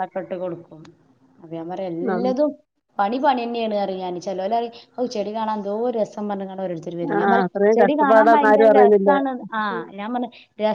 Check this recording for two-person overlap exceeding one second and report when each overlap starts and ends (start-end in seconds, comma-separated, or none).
7.2-9.1